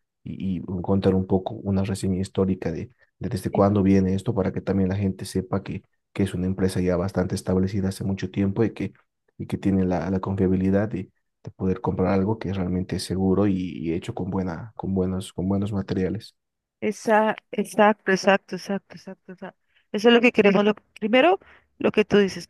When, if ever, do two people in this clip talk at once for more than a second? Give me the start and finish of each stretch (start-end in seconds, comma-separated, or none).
none